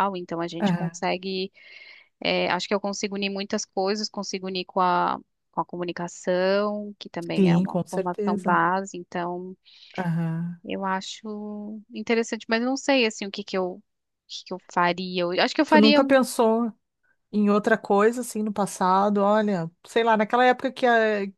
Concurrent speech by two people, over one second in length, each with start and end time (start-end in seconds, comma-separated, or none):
7.3-8.6